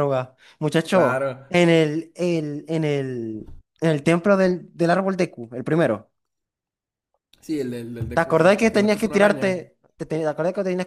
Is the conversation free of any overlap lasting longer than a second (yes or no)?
no